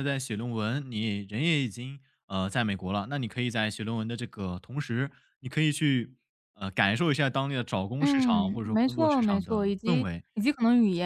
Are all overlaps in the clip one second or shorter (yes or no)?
no